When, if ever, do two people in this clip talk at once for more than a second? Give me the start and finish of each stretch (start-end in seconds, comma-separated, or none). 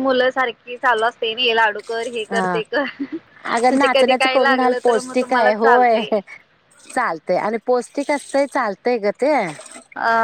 3.6-6.1